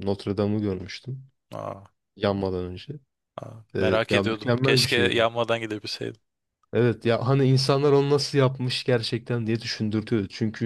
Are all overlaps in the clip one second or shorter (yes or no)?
no